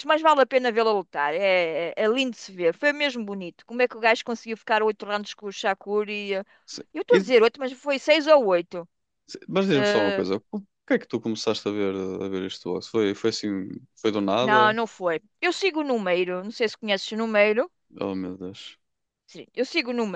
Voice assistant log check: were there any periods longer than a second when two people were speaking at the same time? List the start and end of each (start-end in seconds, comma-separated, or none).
none